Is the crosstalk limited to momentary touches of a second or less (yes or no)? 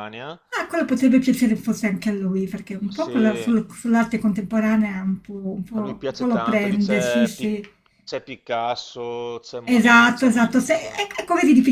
no